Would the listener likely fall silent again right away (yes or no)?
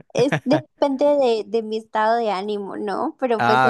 yes